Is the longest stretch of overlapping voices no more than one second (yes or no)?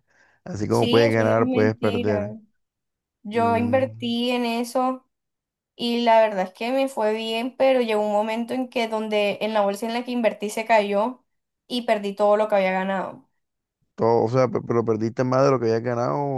no